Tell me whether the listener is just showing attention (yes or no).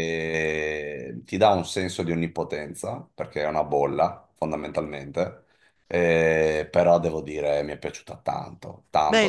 no